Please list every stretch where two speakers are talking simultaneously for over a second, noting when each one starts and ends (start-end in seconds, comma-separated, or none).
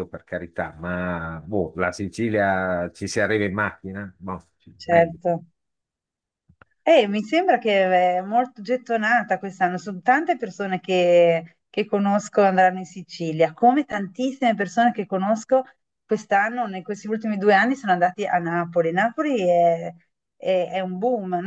none